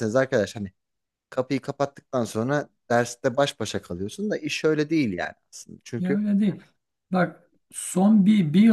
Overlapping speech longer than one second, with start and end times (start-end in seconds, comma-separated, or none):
none